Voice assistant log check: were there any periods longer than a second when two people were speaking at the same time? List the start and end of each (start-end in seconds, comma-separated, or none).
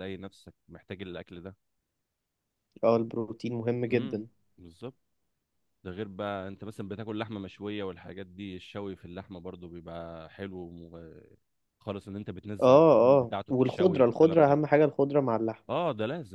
12.6-14.6